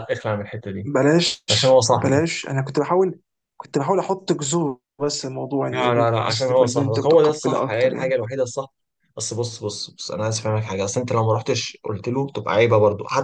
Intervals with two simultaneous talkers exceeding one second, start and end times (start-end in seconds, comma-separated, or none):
5.7-8.2